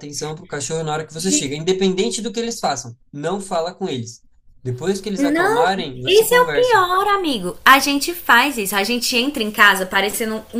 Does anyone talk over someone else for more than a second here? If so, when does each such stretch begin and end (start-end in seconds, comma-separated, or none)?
5.2-6.8